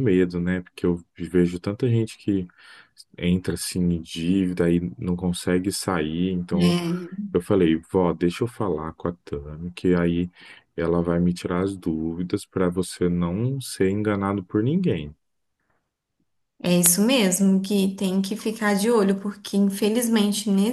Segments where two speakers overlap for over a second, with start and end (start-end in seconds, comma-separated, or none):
none